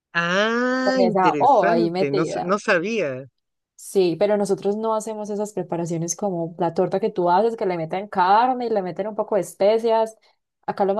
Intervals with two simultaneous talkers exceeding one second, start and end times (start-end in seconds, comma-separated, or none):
0.8-2.5